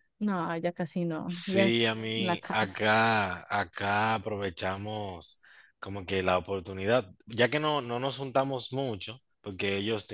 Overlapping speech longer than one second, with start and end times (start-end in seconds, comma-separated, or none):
1.3-2.9